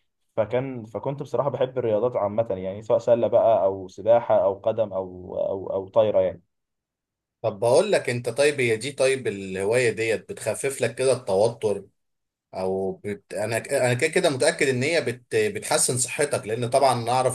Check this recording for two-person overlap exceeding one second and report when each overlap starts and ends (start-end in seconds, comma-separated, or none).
none